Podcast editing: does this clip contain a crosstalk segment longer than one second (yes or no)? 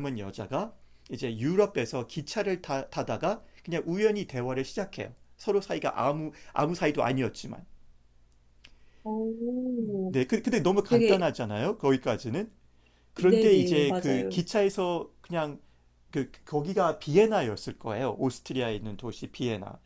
yes